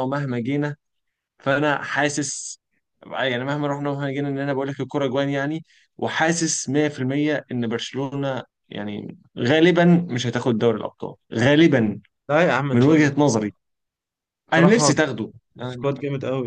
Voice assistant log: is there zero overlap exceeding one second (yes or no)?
yes